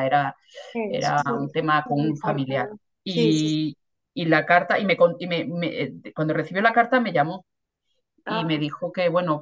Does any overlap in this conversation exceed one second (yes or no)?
yes